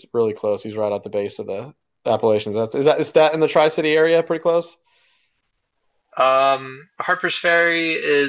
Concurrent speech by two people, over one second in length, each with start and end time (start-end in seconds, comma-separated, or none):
none